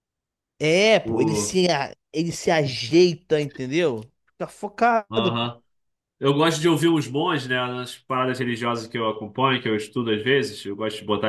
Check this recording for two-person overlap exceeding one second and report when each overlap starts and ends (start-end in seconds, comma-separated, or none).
none